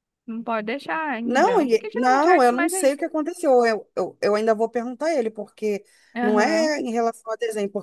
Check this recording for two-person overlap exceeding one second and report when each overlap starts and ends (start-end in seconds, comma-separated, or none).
1.2-3.0